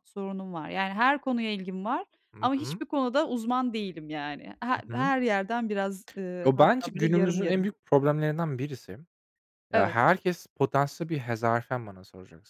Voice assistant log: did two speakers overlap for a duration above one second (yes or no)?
yes